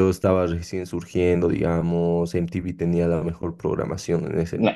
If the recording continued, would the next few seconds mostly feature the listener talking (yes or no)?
yes